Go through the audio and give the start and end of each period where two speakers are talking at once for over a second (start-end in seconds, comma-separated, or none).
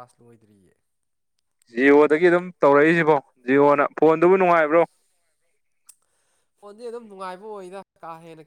none